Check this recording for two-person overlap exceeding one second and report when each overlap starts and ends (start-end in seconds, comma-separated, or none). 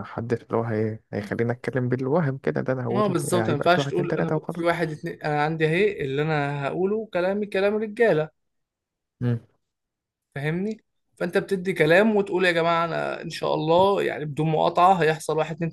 2.9-4.8